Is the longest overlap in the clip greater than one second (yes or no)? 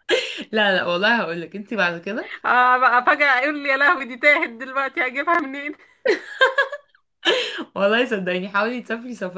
no